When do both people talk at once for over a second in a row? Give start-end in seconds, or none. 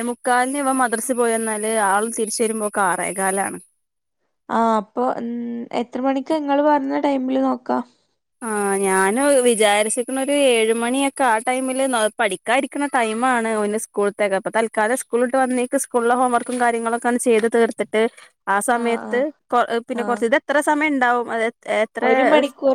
none